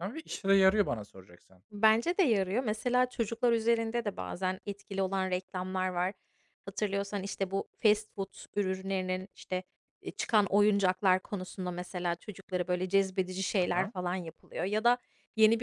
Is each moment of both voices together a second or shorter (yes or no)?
yes